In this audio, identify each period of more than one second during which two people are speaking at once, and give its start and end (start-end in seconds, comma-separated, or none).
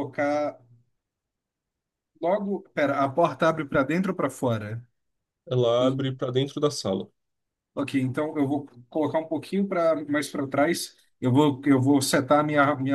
none